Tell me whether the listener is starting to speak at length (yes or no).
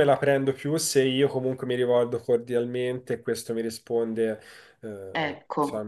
no